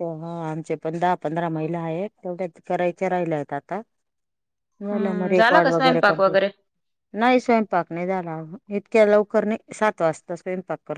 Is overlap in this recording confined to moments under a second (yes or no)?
no